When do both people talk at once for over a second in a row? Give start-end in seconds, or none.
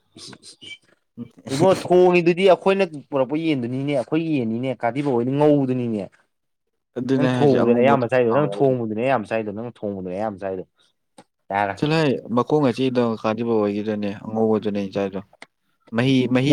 7.1-8.7